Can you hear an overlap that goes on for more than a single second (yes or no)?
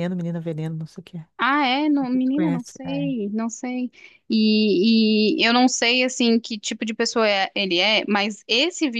yes